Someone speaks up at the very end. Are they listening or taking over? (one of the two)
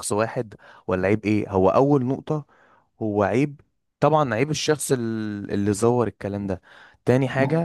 listening